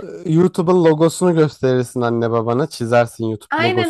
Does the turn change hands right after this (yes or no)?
yes